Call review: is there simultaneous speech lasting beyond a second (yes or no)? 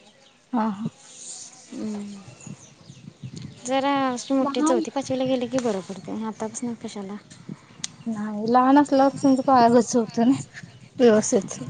no